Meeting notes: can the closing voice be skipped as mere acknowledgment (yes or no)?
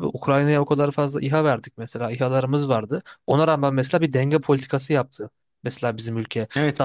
no